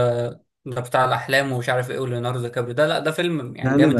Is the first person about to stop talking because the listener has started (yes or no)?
no